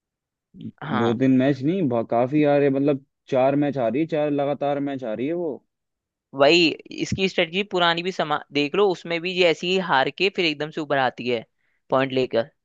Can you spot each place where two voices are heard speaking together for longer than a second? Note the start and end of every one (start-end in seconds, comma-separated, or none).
none